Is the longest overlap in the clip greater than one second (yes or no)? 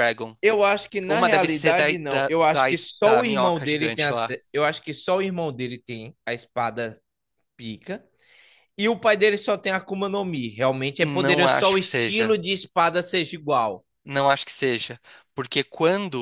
yes